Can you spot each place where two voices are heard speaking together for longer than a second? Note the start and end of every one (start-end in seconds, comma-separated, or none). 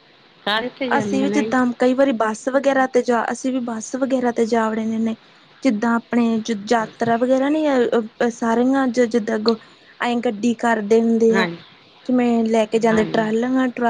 none